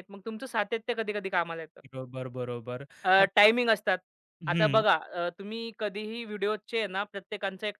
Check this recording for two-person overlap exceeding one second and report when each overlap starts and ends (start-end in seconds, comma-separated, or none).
none